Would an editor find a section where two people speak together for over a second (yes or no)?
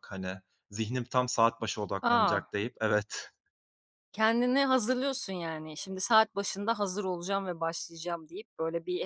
no